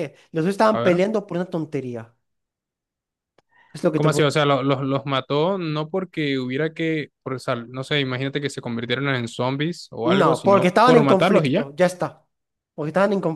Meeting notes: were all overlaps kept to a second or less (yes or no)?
no